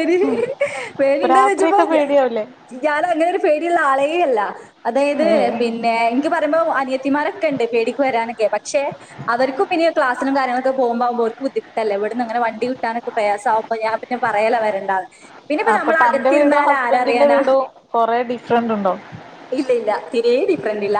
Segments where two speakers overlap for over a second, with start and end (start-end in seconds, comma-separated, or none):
none